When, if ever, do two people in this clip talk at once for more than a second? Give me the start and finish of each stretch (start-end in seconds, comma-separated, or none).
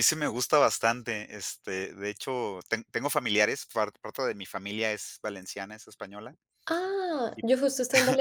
none